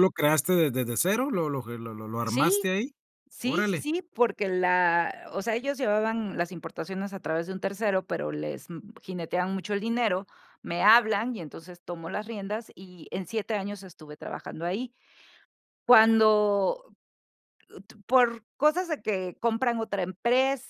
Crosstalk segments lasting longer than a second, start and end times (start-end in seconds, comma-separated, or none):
none